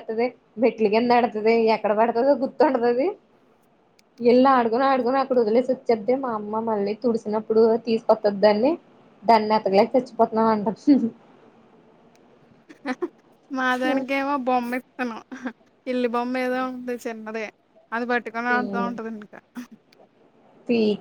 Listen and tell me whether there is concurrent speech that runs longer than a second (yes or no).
no